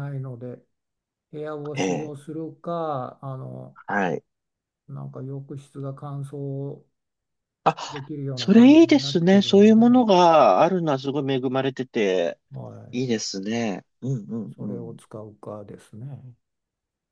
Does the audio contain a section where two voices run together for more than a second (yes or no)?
yes